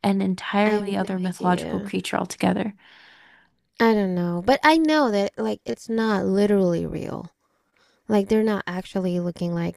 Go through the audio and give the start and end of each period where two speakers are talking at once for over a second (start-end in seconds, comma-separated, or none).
0.7-1.9